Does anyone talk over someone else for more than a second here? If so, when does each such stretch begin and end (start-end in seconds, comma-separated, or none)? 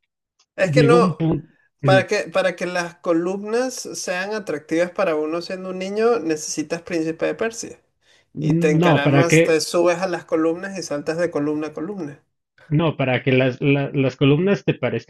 none